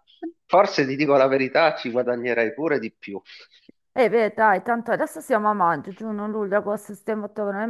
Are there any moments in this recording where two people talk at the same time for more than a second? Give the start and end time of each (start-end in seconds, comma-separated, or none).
none